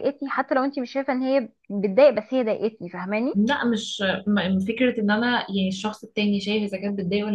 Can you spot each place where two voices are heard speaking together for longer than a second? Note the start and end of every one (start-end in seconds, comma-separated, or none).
none